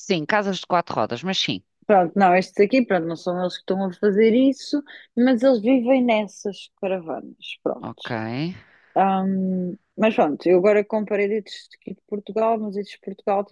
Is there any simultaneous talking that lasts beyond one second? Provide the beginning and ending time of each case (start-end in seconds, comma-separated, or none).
none